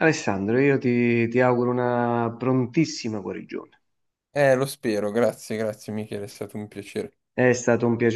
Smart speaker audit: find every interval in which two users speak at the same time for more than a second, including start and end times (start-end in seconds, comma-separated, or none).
none